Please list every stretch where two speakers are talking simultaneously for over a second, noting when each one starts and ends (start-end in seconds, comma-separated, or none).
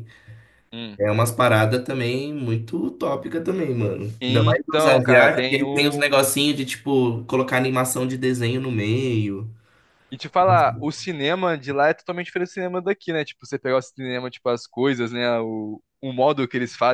4.2-6.2